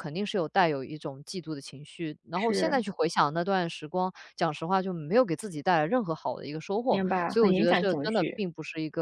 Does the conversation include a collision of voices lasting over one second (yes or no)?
yes